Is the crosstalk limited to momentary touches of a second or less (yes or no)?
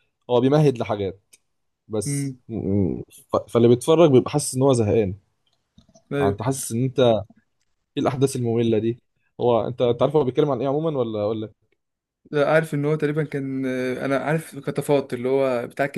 yes